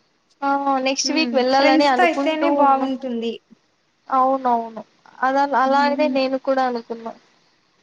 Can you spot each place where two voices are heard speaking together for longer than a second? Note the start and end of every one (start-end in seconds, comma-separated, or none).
1.1-2.8